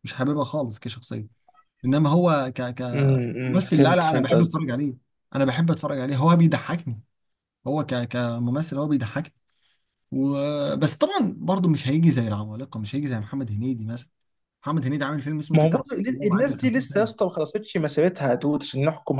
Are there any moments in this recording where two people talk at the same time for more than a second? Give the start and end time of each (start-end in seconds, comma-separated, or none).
2.9-4.6, 15.5-17.1